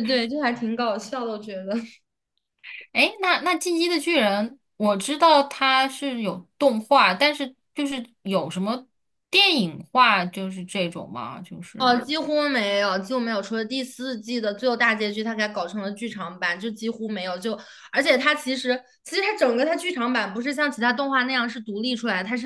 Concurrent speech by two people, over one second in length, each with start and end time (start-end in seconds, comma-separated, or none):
none